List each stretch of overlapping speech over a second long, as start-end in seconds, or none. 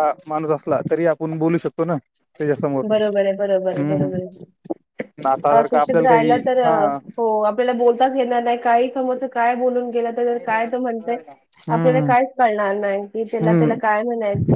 none